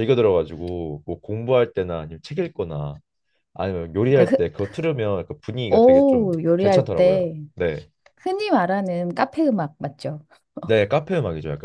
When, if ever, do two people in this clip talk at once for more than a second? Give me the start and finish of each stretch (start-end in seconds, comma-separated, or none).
5.7-7.4